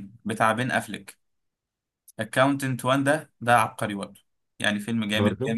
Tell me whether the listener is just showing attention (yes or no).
yes